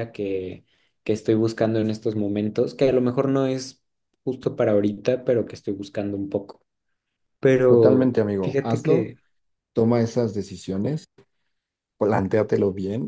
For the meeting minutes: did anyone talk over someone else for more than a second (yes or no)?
yes